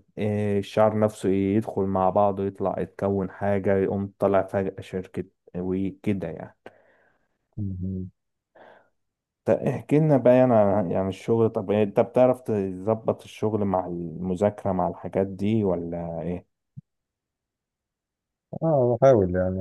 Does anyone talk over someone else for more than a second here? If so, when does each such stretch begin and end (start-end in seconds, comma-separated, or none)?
none